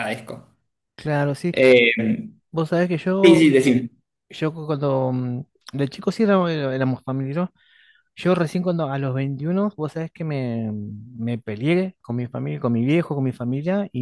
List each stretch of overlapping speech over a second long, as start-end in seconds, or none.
none